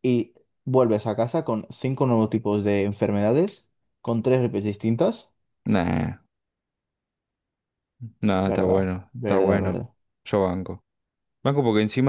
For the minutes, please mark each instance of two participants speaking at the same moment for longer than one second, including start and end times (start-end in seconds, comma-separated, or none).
8.5-9.8